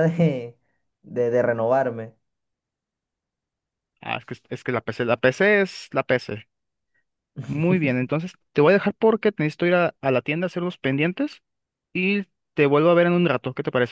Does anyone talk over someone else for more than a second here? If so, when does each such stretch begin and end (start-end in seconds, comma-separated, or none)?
none